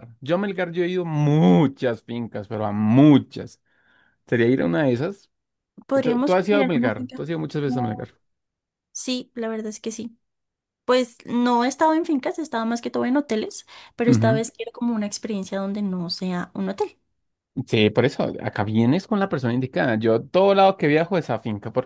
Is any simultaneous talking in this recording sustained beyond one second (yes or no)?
yes